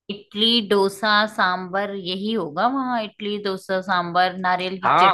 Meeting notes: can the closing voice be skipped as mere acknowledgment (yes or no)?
no